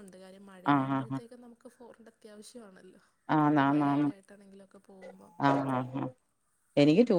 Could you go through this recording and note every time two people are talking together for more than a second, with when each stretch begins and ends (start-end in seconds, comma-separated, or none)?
none